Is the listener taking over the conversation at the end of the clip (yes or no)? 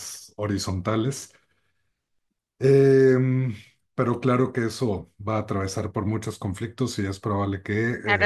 yes